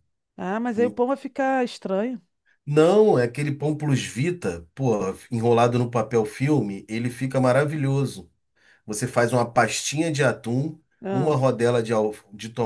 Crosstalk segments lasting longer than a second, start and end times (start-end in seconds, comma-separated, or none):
none